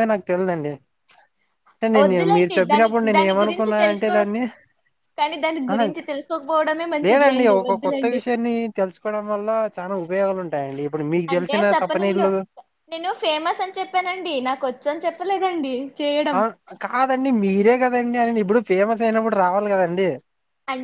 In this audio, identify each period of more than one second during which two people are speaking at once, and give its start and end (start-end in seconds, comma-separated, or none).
2.0-4.1